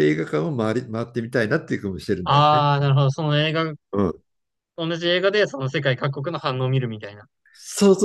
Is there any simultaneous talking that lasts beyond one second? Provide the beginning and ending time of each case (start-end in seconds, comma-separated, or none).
none